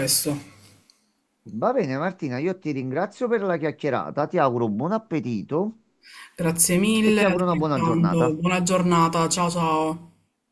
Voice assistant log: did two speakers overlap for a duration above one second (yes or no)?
yes